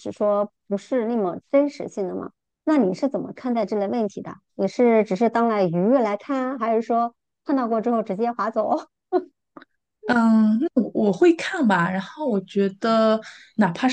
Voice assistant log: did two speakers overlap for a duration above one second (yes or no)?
no